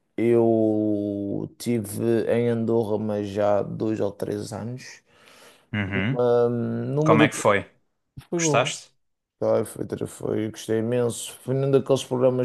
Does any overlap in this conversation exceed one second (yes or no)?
no